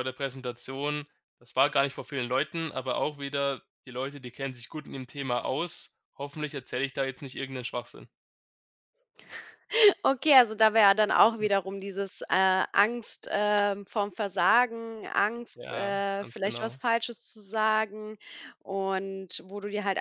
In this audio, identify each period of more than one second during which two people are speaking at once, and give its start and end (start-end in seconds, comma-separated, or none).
15.5-16.8